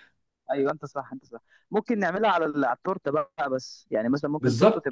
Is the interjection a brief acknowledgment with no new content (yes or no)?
no